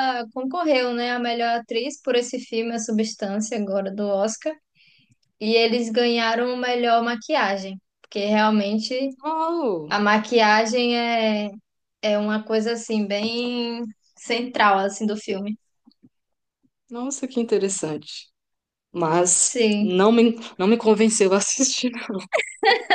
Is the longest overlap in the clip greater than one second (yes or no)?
no